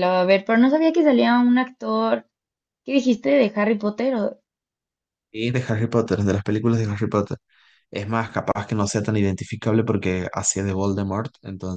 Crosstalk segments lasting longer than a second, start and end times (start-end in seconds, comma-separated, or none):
none